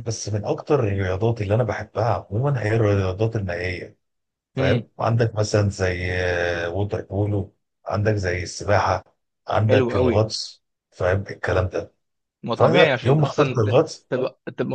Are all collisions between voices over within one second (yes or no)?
no